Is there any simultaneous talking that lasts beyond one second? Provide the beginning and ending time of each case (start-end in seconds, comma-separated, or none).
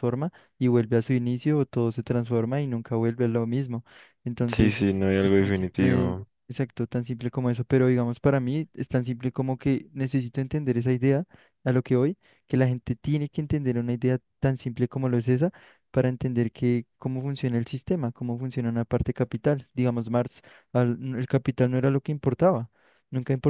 4.5-6.3